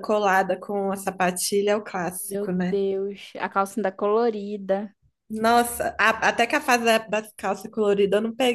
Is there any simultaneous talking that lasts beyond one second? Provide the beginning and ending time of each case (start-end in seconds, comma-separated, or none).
none